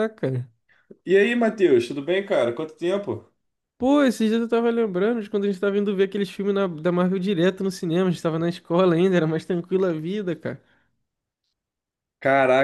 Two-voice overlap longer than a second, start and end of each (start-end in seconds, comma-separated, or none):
none